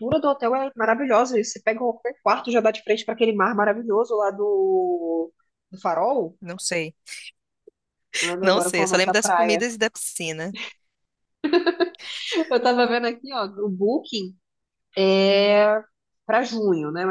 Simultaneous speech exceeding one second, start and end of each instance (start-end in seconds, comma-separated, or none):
8.4-9.6